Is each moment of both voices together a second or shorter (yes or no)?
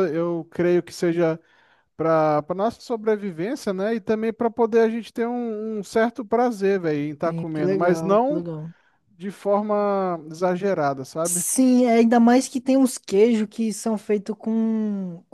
no